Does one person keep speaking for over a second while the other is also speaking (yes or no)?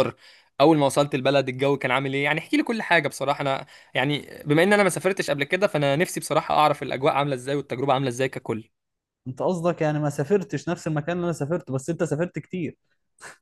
no